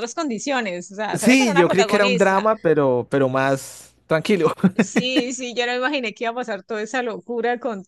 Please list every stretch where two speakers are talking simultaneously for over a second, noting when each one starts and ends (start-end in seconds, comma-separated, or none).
1.1-2.5